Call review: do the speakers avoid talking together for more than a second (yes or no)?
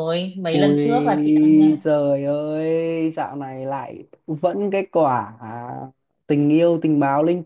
no